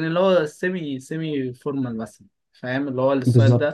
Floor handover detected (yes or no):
yes